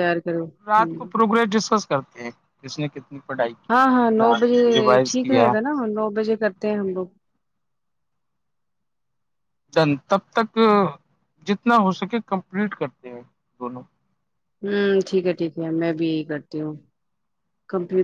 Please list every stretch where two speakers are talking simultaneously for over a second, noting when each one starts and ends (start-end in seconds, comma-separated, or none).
none